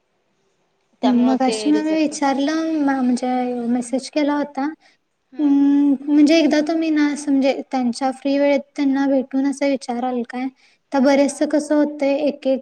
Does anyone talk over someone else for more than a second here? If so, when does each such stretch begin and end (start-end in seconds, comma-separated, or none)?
1.0-2.3